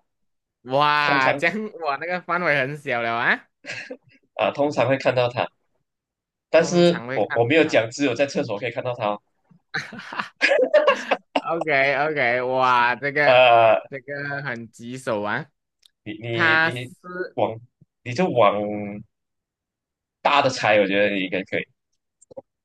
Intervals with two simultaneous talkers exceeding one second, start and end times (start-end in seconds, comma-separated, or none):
6.6-7.8